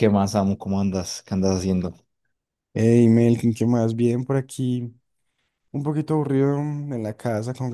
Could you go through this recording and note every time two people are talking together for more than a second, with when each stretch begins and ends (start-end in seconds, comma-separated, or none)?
none